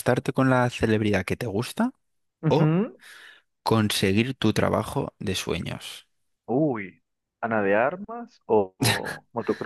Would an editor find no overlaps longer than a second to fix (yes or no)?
yes